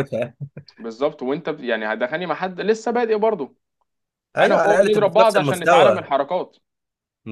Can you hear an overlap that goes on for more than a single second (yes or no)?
yes